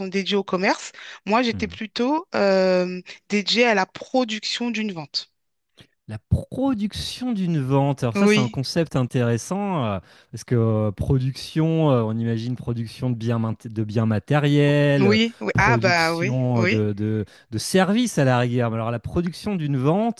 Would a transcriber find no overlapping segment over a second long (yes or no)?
no